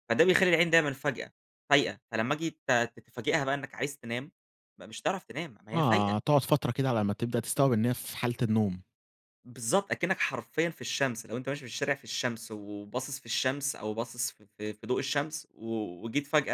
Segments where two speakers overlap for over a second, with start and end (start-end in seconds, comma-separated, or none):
none